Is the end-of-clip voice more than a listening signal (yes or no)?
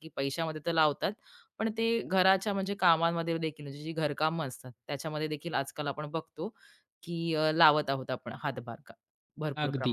yes